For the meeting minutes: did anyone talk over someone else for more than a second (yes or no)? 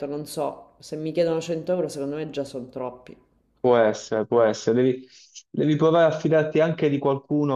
no